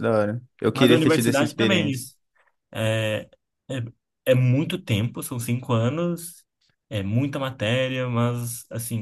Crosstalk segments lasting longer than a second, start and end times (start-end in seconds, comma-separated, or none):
0.8-2.1